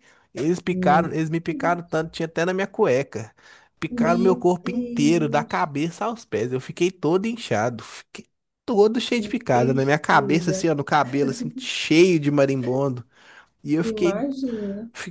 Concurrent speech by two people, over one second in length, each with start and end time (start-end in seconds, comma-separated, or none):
3.9-5.7, 9.1-10.7